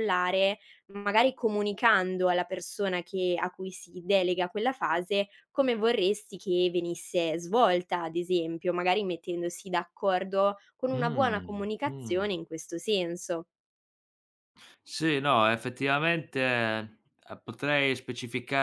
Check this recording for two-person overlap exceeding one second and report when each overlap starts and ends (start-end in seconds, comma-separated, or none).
10.9-12.3